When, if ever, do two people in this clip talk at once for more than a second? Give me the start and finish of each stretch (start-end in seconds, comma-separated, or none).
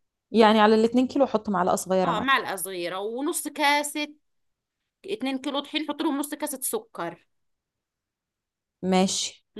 none